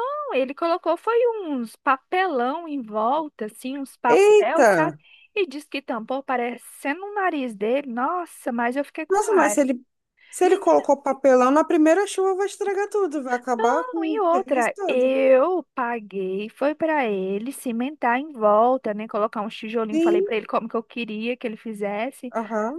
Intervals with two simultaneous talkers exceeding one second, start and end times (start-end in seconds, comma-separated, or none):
13.5-15.2